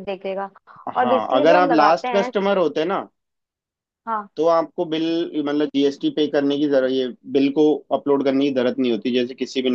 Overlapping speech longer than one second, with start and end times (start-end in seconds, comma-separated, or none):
1.0-2.3